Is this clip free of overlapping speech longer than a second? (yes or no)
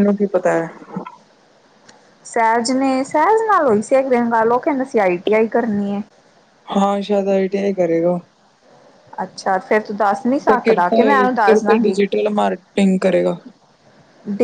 no